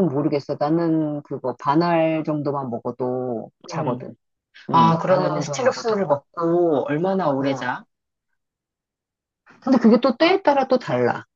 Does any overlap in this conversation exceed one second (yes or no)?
yes